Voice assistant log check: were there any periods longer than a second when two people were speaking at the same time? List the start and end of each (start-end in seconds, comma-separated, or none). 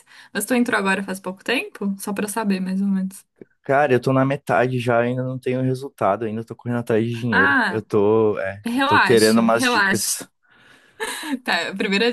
8.6-10.2